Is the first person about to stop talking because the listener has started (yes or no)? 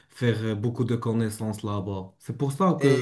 yes